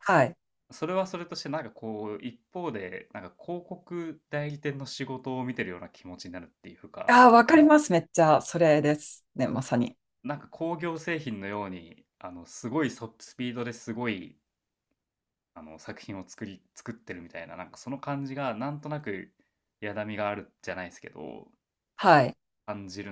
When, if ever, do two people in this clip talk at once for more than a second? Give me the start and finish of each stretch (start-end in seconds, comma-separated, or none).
none